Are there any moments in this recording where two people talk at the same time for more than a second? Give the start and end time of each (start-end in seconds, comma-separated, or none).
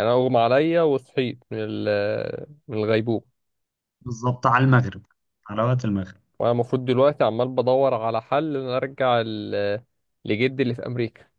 none